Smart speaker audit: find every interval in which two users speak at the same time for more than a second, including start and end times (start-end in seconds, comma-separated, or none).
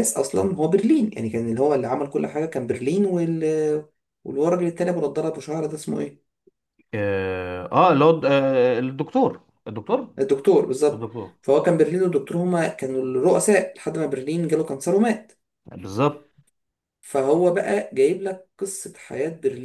none